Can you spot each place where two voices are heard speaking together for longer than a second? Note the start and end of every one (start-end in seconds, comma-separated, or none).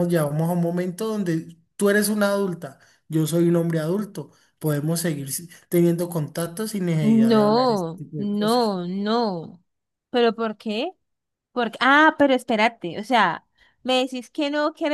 7.0-8.8